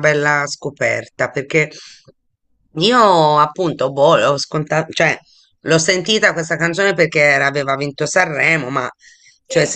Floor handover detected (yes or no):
no